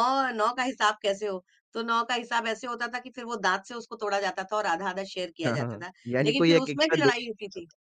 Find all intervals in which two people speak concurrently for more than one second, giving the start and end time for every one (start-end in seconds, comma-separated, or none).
5.5-7.1